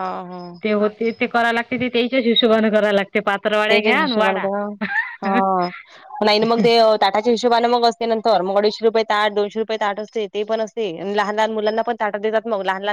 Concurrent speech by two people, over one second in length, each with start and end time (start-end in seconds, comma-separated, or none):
none